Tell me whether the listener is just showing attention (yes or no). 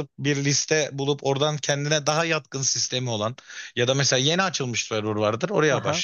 yes